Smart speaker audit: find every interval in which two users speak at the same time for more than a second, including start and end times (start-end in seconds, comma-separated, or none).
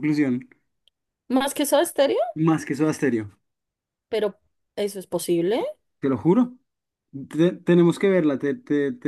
none